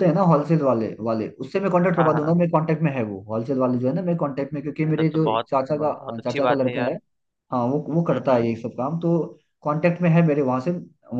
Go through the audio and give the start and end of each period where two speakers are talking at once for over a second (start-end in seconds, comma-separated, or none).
4.8-7.0